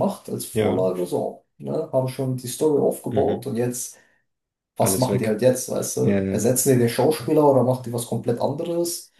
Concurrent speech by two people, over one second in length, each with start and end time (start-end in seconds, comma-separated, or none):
none